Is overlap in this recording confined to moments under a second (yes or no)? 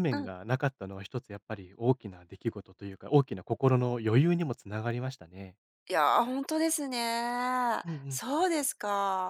yes